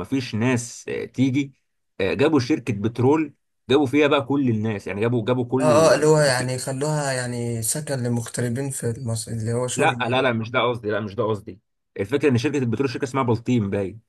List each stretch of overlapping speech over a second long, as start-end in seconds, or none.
none